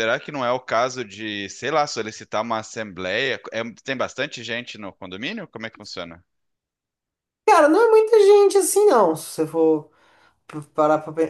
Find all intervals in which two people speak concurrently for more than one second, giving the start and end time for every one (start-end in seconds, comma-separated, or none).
none